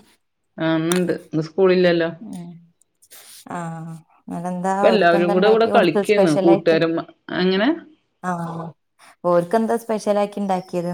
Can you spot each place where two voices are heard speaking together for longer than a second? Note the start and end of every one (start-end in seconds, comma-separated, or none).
4.7-6.8